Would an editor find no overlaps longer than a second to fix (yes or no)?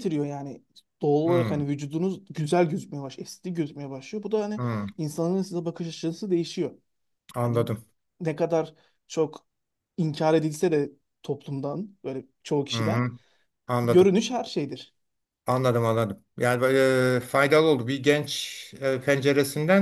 yes